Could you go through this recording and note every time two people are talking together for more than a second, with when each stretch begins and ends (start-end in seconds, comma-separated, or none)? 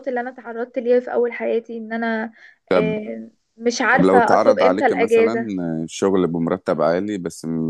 3.9-5.5